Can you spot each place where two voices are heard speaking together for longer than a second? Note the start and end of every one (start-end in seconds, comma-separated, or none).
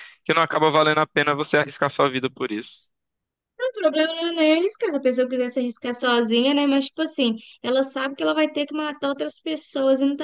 none